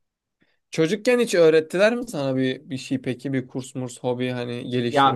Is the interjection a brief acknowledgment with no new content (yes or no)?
no